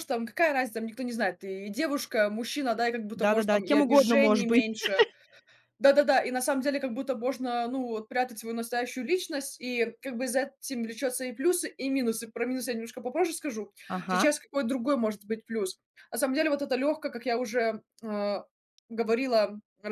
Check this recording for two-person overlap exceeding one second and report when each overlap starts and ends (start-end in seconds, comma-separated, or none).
3.1-4.6